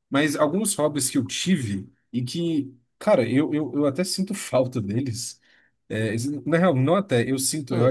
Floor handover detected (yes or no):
no